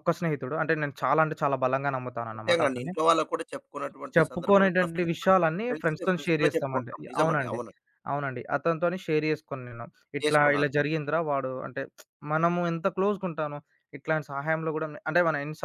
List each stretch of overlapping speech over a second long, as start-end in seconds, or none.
4.2-7.6